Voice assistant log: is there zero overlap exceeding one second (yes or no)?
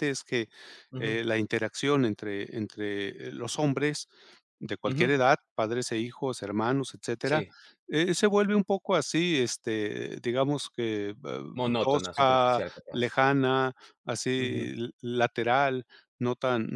no